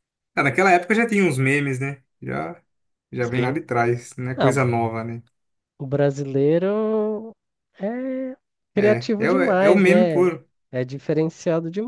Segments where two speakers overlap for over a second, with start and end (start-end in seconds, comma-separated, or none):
8.8-10.3